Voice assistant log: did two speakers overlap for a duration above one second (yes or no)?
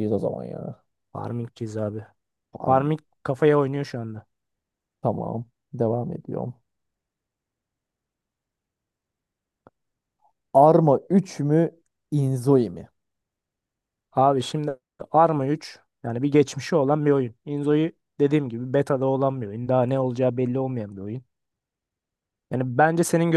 no